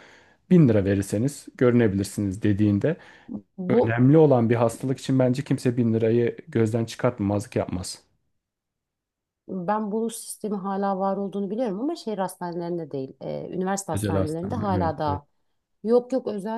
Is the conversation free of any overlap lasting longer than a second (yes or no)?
no